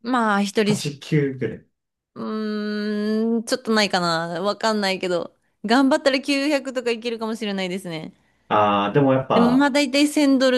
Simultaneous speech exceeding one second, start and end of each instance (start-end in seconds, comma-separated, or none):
none